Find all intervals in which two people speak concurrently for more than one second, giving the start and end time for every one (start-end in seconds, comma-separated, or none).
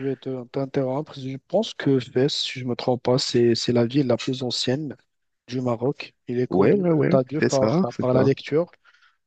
6.5-8.3